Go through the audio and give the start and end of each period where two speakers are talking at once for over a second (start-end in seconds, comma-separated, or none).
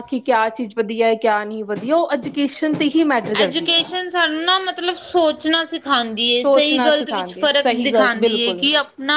6.4-8.7